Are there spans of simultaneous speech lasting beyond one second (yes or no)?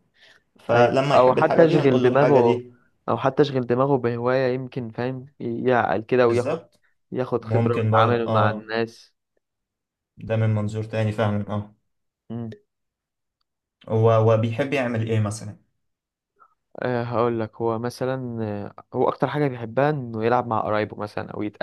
yes